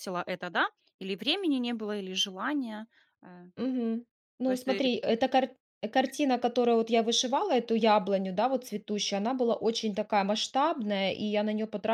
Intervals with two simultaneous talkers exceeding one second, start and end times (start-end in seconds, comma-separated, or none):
none